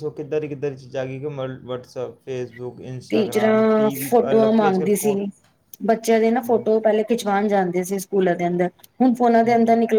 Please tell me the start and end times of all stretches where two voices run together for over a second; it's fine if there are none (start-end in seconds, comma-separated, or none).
3.1-5.1